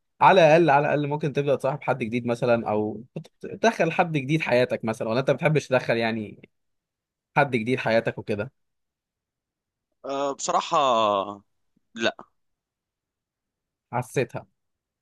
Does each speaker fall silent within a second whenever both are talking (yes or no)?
yes